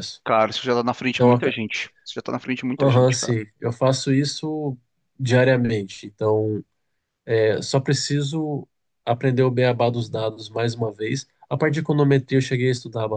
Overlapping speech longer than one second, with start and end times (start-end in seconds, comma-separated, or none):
none